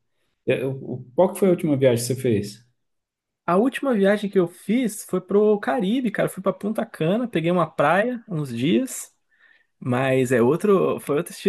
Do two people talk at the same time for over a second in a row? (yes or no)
no